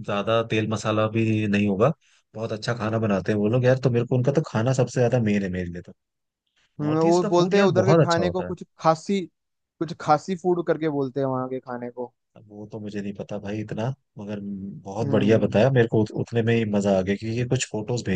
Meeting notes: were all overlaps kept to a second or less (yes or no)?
no